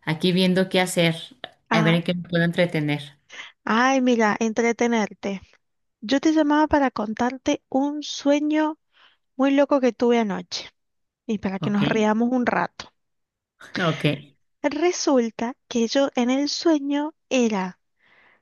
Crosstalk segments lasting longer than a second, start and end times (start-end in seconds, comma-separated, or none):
none